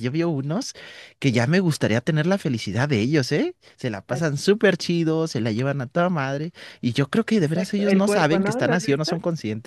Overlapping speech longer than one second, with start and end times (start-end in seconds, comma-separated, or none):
7.4-9.1